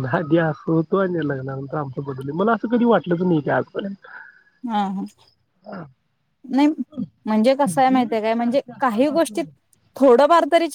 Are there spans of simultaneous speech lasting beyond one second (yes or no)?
yes